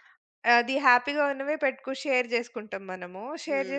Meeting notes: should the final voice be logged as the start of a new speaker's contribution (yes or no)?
no